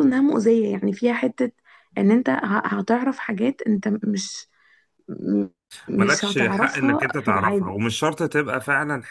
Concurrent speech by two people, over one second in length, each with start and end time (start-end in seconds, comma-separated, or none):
6.0-7.7